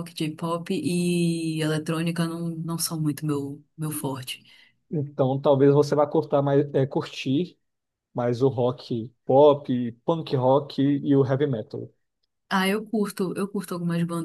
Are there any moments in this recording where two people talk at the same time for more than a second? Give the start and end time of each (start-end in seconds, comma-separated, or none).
none